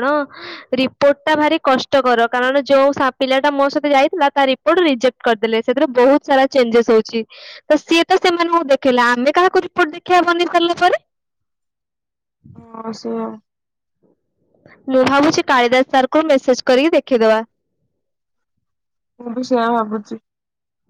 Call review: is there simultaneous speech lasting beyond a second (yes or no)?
no